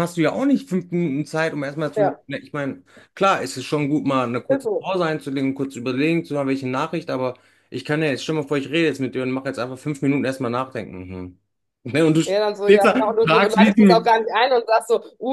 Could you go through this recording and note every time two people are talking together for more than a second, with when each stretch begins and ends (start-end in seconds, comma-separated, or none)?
12.3-14.1